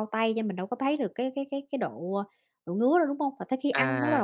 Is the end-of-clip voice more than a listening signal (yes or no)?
yes